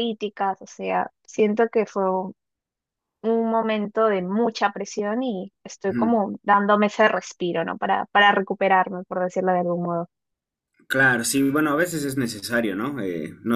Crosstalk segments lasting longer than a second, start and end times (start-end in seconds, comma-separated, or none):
none